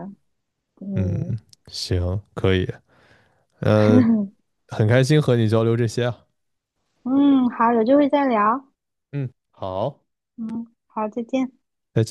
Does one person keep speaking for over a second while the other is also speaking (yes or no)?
no